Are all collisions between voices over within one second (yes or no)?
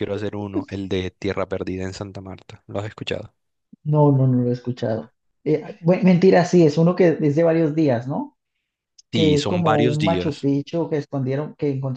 no